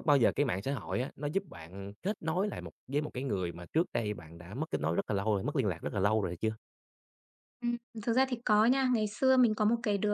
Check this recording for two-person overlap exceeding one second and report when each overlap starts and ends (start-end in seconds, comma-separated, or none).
none